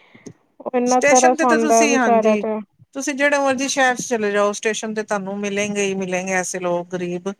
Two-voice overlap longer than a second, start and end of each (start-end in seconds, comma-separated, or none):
0.9-2.4